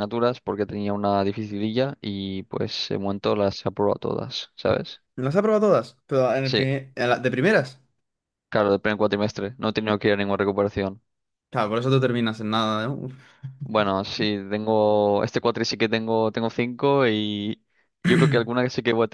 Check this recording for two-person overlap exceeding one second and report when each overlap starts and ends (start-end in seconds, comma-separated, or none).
none